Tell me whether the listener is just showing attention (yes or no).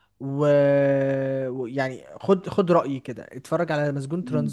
no